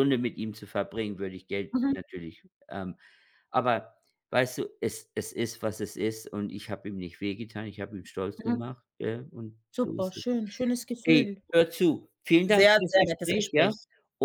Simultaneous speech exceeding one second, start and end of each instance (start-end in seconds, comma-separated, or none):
12.5-13.7